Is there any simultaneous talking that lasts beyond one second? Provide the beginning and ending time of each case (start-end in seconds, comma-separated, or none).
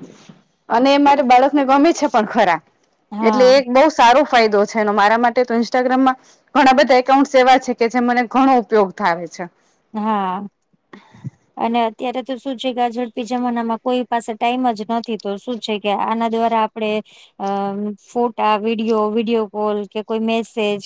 none